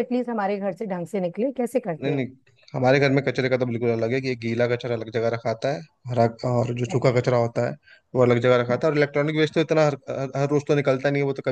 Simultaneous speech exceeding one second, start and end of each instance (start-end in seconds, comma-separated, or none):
none